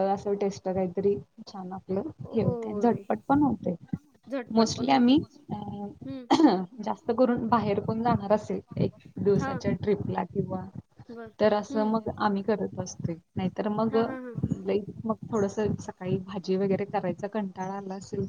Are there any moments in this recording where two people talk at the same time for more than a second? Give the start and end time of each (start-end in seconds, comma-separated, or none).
4.5-6.2